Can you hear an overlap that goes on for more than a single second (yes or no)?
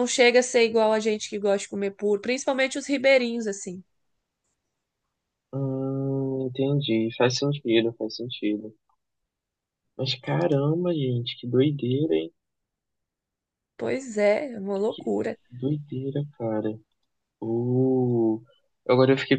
no